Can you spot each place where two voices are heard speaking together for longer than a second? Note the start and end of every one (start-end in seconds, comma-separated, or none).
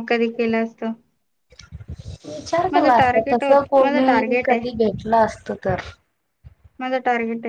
2.7-4.6